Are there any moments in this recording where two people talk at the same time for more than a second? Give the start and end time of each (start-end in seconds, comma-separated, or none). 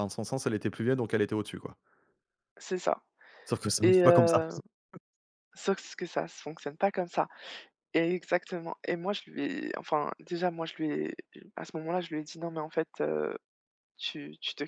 none